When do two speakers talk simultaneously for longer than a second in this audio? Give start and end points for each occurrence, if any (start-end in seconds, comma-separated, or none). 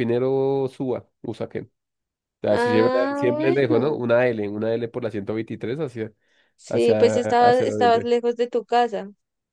2.5-4.0, 6.7-8.1